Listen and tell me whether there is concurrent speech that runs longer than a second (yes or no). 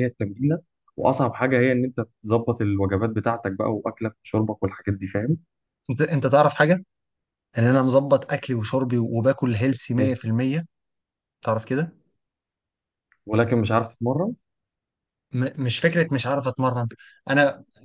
no